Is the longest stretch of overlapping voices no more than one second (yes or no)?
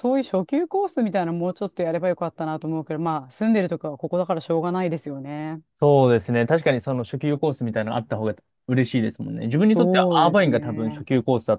no